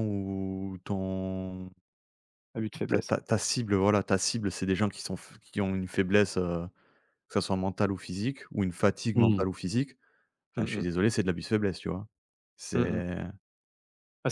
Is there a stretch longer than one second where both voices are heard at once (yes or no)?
no